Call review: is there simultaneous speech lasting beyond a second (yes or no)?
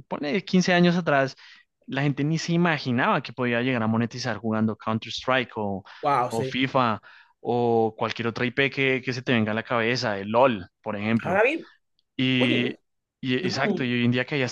no